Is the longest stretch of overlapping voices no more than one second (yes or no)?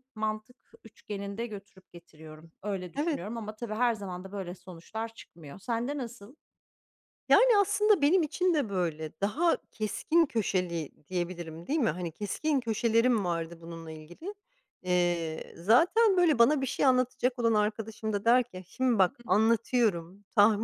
yes